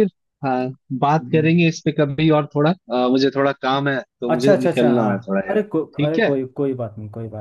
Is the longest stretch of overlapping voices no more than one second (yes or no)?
no